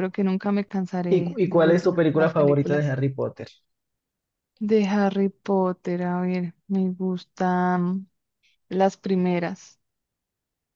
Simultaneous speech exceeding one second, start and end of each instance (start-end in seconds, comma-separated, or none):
1.1-2.9